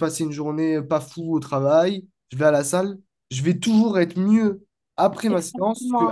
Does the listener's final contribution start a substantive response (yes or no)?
yes